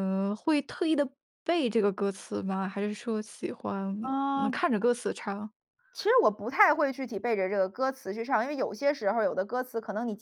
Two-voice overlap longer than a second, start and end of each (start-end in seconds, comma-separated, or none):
none